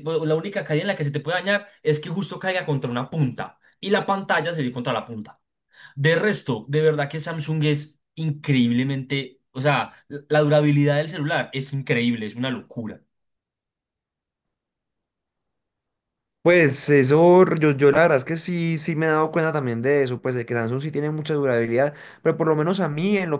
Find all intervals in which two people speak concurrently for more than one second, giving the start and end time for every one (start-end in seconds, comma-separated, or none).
none